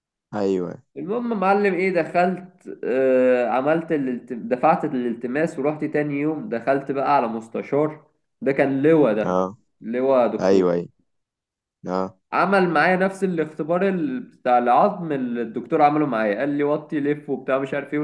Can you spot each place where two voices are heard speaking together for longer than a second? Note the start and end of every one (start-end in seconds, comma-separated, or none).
none